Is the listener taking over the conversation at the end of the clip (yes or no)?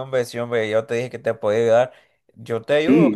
no